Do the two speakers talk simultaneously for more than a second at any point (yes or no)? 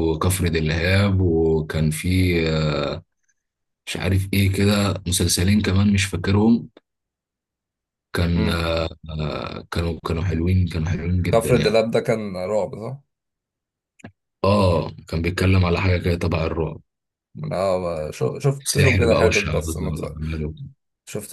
yes